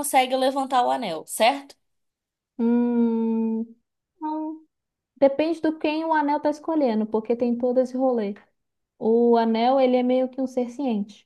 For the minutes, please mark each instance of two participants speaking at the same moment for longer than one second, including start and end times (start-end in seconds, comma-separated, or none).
none